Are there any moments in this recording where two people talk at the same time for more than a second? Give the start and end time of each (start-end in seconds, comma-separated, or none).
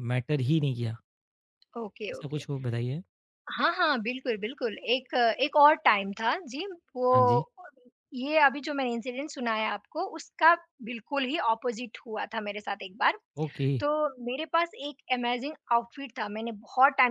none